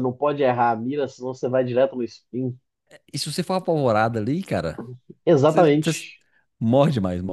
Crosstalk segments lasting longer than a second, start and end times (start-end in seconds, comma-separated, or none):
none